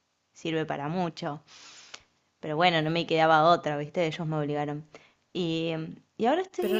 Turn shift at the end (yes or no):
yes